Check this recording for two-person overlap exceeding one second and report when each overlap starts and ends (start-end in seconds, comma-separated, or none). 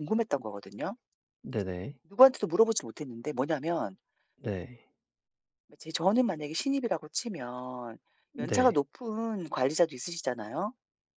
none